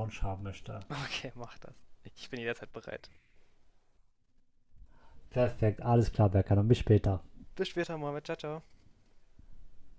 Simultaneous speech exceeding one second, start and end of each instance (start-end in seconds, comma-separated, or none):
none